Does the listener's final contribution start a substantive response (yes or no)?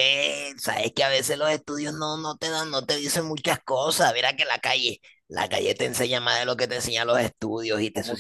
yes